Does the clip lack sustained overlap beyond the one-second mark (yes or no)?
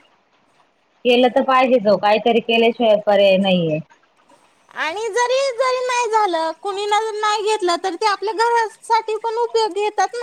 yes